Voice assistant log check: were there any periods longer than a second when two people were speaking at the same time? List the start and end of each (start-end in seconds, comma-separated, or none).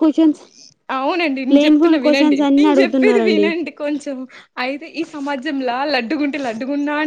1.6-3.5